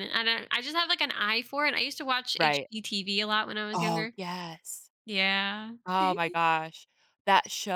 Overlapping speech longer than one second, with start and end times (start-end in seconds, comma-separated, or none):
none